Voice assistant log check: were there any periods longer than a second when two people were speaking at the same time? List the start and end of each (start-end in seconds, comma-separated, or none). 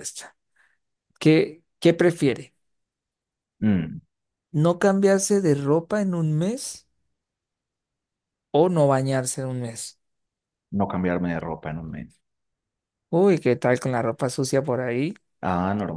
none